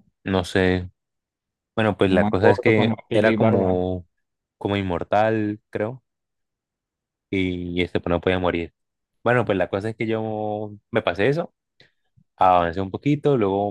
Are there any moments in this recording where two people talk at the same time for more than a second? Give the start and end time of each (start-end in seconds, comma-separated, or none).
2.1-3.8